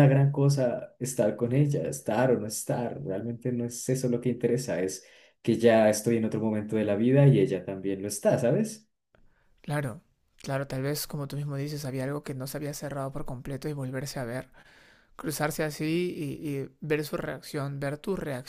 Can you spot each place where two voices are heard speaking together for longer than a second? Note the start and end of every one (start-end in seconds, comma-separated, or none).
none